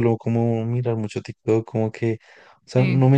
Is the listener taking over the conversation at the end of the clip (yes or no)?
no